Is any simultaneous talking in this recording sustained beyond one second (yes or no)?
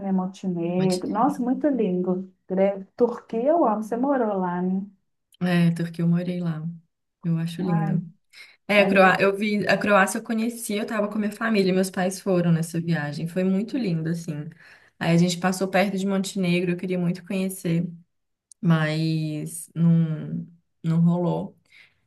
no